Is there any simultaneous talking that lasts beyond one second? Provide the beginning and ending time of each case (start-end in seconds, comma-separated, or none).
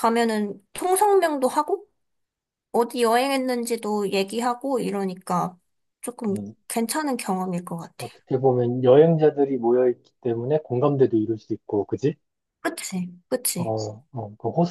none